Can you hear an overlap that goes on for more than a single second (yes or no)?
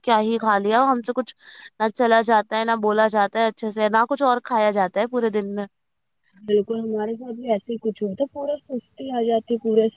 no